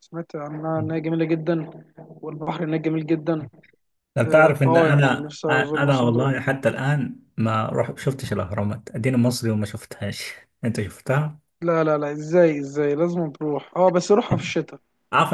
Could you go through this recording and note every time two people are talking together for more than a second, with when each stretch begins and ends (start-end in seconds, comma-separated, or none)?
4.2-6.3